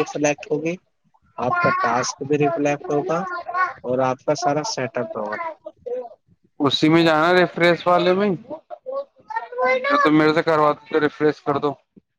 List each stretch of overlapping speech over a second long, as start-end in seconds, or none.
none